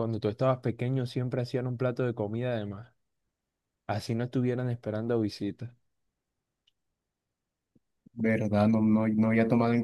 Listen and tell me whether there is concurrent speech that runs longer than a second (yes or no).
no